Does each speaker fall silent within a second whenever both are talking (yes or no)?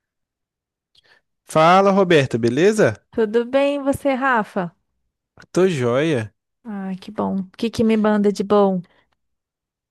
yes